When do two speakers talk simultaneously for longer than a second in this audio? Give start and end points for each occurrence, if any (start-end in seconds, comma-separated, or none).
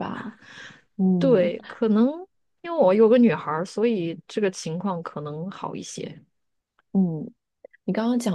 none